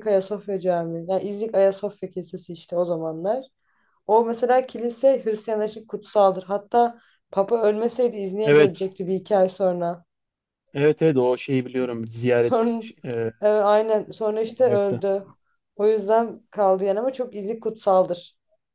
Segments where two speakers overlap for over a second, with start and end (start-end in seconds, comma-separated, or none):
none